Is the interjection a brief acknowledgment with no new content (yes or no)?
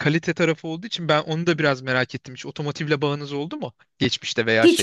no